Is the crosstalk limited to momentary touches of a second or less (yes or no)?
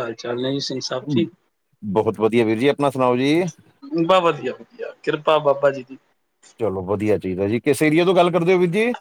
yes